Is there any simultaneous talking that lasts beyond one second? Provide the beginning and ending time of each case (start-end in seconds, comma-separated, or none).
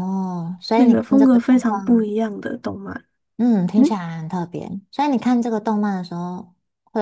0.7-2.1